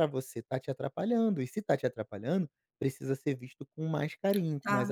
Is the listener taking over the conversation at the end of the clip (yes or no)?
yes